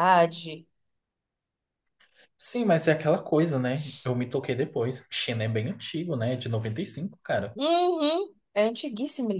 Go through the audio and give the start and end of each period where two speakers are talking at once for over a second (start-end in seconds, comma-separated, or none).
none